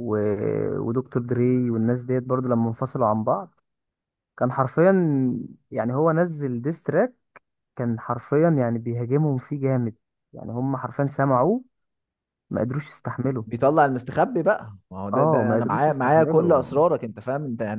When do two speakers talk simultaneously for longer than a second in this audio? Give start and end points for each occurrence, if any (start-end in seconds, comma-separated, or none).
15.1-16.8